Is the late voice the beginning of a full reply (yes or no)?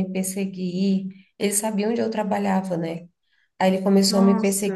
no